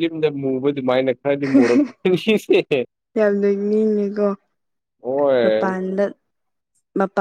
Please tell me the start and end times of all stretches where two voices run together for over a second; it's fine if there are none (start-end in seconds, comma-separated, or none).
none